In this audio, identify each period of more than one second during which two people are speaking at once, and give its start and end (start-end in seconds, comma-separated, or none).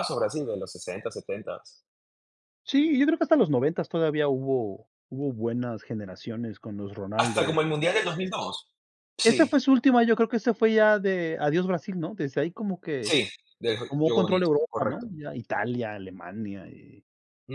13.9-15.1